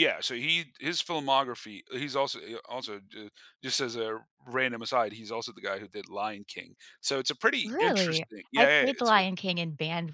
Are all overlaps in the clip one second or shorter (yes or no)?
no